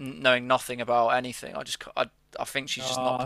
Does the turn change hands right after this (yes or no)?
yes